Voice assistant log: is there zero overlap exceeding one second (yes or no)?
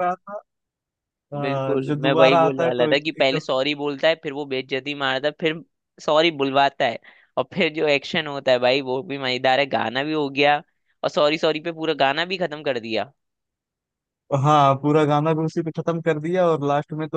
no